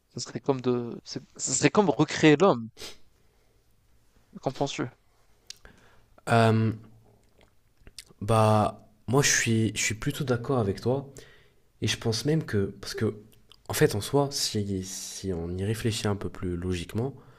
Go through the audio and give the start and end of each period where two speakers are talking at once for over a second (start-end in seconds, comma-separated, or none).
none